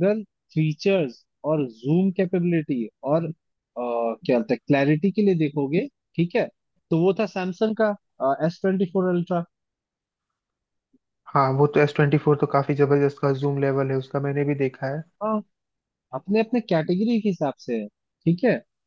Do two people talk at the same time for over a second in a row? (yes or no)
no